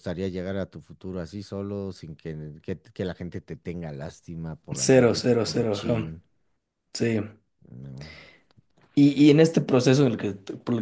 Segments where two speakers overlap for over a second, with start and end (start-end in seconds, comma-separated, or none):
4.7-6.1